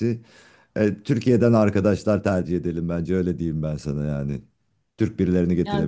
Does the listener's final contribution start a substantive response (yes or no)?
yes